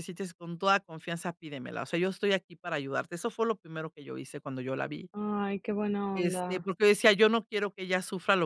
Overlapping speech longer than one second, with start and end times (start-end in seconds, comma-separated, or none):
none